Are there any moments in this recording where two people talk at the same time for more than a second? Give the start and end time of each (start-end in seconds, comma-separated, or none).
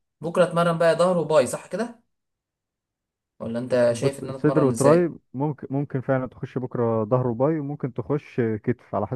3.9-5.1